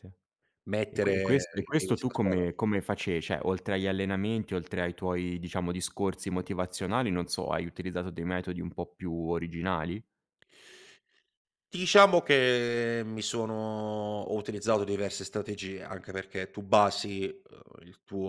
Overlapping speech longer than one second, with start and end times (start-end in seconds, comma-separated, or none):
0.9-2.5